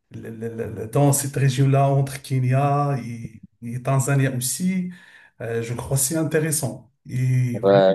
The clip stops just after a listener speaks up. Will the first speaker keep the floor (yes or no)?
no